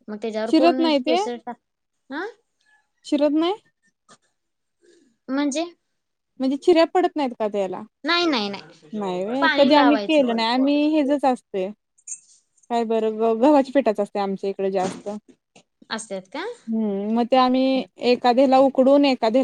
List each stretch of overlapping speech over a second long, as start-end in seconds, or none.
9.0-11.2